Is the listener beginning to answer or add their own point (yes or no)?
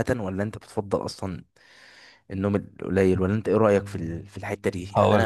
no